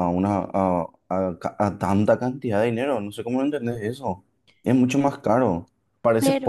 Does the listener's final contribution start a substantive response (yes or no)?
no